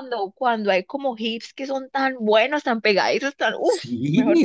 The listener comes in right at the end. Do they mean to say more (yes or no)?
yes